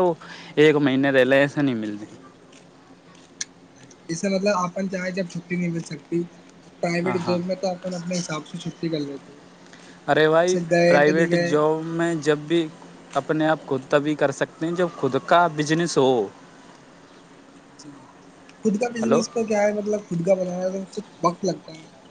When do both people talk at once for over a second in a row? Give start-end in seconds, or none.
none